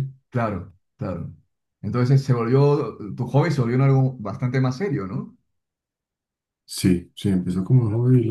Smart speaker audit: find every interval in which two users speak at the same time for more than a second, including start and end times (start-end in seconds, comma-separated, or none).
none